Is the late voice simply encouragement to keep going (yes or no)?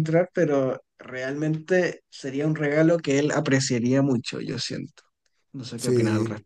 no